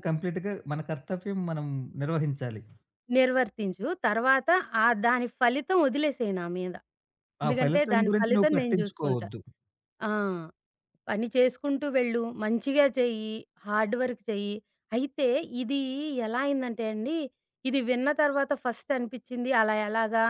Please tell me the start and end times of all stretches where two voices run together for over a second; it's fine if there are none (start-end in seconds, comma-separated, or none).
7.5-9.3